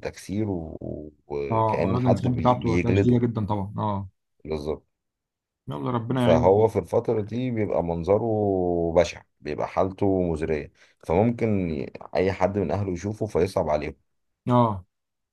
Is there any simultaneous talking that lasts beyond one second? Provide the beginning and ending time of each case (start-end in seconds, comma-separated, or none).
1.5-3.2